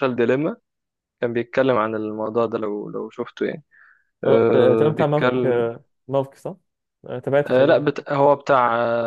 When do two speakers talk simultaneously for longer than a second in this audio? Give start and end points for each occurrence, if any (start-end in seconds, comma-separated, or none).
4.2-5.6